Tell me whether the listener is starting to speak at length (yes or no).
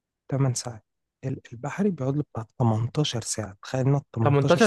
yes